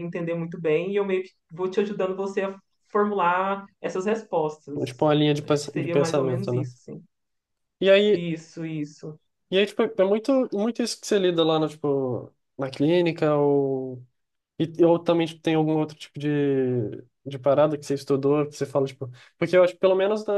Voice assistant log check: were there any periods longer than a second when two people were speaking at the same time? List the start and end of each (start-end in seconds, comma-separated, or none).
5.4-6.7